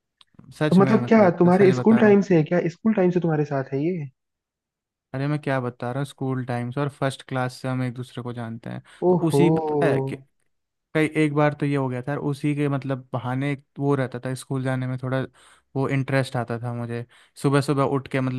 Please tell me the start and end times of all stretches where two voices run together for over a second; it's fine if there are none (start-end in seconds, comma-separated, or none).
0.7-2.2